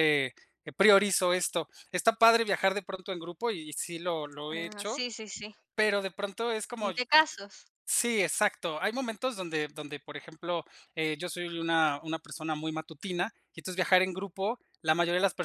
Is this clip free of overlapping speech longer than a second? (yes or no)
yes